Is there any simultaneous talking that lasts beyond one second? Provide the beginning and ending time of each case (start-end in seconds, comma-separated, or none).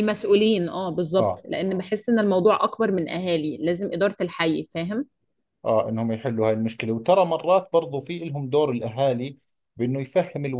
none